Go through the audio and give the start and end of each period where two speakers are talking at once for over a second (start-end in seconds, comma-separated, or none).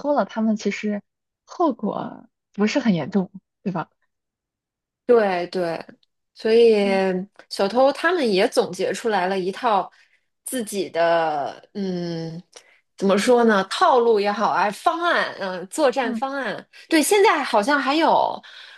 none